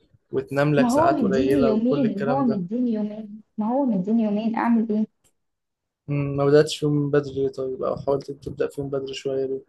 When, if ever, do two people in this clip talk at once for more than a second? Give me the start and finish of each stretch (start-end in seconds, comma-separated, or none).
0.8-2.6